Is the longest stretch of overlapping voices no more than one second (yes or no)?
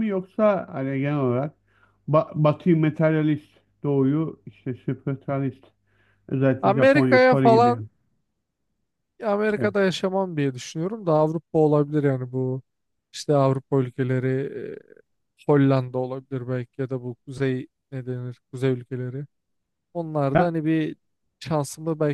no